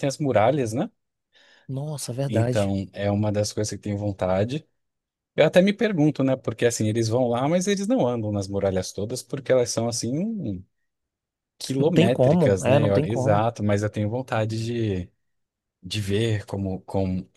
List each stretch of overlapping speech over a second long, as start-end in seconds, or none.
11.8-13.5